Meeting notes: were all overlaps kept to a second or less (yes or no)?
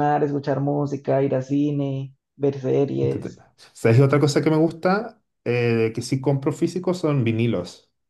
yes